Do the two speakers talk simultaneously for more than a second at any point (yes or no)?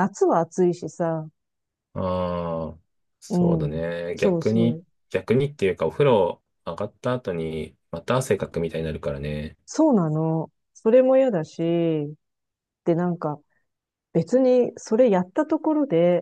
yes